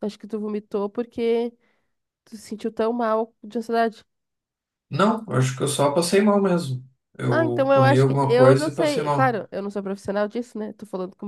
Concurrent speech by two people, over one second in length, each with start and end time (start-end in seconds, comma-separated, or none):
7.3-9.4